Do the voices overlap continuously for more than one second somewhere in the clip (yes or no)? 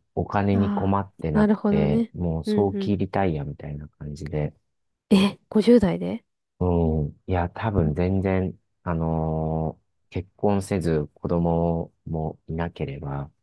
yes